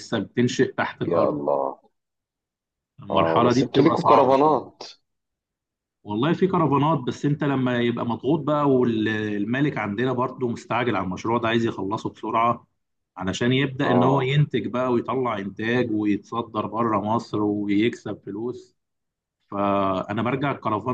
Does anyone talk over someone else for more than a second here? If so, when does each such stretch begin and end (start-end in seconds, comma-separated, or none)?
3.1-4.7